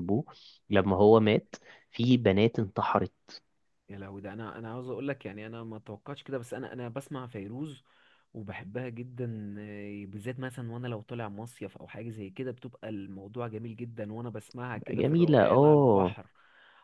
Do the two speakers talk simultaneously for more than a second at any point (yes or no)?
yes